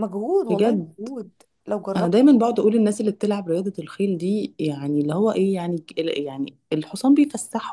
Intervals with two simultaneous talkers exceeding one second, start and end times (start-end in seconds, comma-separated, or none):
none